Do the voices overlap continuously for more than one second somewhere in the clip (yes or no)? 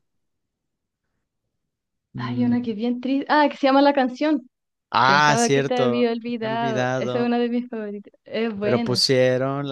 yes